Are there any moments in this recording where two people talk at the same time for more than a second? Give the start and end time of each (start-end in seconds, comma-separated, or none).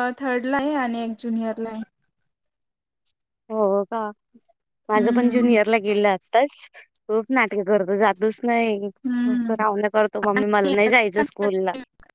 none